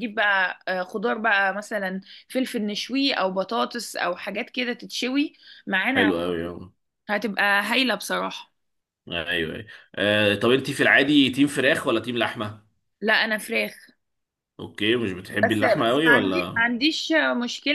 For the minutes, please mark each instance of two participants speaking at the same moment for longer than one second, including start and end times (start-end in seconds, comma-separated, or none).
15.4-16.6